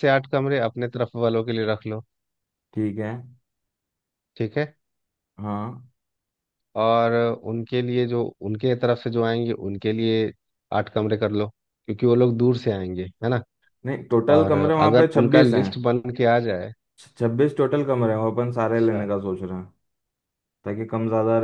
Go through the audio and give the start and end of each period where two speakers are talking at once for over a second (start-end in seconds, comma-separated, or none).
14.3-15.7